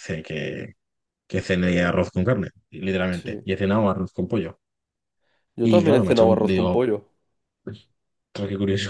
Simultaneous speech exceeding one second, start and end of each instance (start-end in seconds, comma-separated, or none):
5.6-6.8